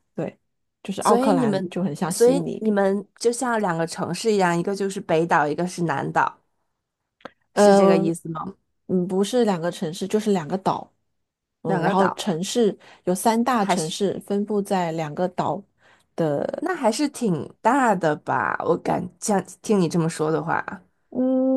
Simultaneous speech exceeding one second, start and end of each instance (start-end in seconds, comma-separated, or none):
1.0-2.6